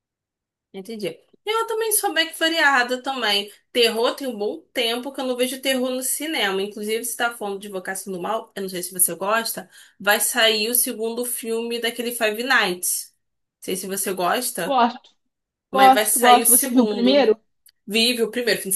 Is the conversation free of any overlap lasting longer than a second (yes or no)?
no